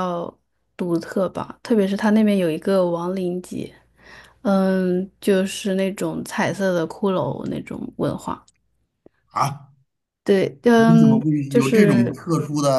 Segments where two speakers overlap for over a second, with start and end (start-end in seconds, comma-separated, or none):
10.7-12.2